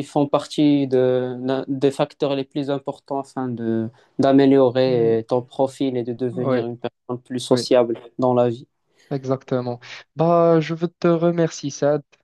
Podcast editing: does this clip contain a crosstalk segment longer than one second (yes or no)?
no